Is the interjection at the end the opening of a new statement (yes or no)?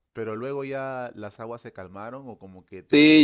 yes